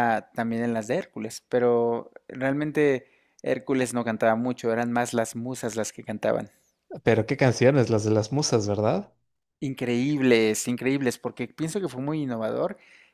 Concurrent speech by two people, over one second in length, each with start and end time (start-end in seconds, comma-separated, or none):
none